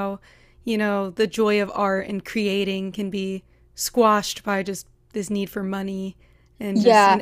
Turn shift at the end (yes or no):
yes